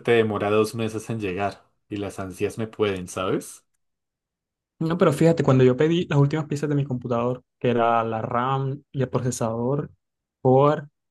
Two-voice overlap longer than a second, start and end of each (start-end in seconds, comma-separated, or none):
none